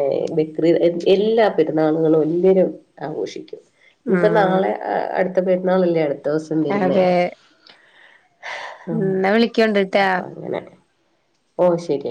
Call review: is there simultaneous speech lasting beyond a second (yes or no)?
no